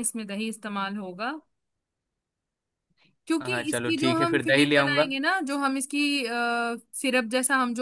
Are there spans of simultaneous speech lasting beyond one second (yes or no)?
yes